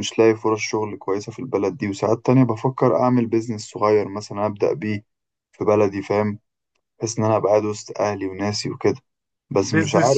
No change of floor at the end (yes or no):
no